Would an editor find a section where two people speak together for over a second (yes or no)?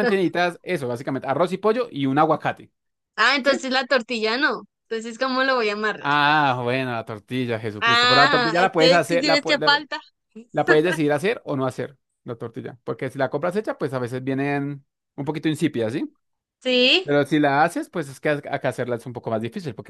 yes